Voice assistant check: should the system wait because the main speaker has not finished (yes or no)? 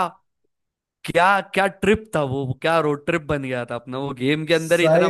no